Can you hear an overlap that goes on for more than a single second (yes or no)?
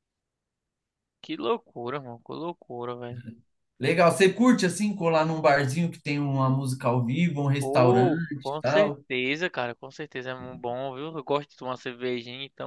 yes